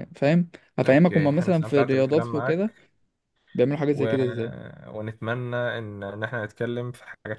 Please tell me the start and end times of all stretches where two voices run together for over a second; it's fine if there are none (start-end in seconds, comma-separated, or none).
0.9-2.7